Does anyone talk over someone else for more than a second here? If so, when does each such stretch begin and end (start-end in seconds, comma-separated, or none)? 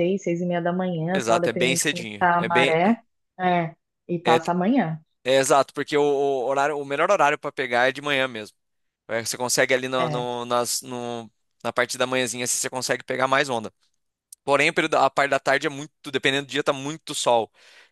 1.1-2.7